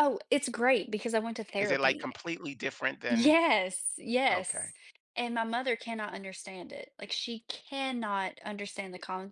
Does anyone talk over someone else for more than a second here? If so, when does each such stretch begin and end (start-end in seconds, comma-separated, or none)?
none